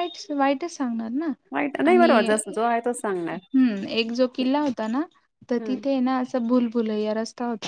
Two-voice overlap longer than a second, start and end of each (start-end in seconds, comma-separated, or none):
none